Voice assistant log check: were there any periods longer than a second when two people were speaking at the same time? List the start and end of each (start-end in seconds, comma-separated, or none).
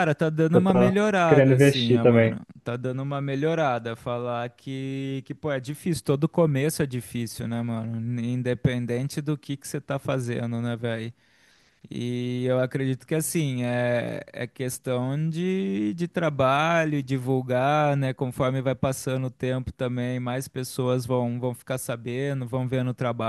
0.5-2.4